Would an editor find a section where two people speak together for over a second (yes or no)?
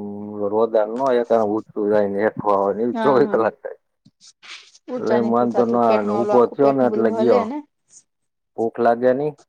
yes